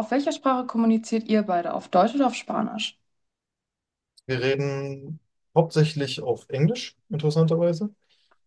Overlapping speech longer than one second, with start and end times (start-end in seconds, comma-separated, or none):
none